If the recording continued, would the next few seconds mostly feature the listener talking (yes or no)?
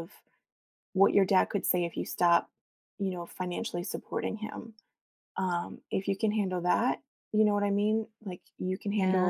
yes